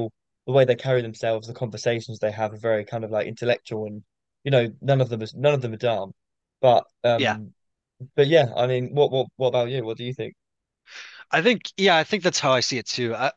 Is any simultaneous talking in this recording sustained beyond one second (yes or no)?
no